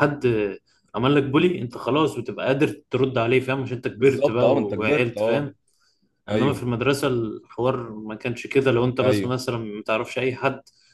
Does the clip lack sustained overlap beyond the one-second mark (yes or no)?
no